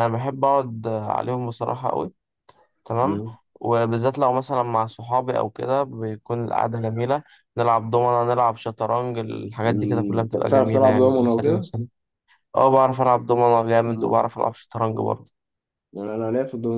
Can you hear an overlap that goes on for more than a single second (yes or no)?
yes